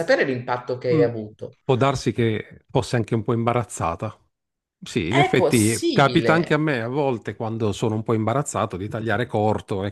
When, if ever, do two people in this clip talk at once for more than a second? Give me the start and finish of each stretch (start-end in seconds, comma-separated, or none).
5.1-6.6